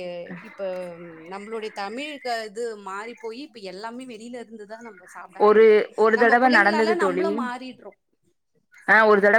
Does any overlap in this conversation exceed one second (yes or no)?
no